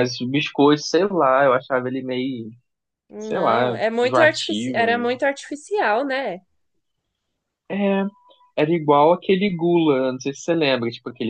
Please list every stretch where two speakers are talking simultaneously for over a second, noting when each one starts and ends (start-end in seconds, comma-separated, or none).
3.2-5.1